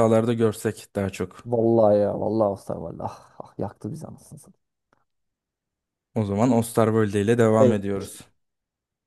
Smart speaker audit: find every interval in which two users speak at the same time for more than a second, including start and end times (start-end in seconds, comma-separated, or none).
none